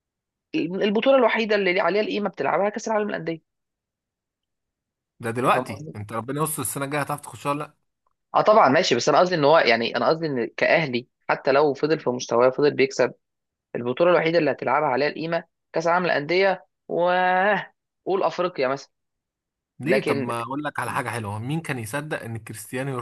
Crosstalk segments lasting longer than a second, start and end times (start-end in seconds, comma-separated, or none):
none